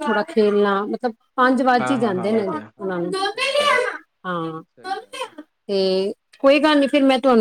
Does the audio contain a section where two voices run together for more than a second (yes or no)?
yes